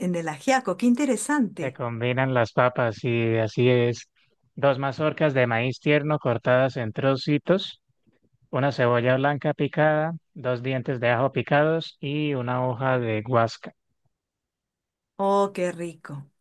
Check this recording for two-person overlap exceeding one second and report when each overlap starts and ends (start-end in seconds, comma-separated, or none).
none